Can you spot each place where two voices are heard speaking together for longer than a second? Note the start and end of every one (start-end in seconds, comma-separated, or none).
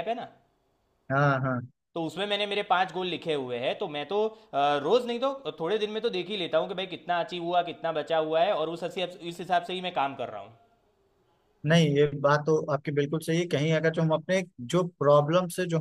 none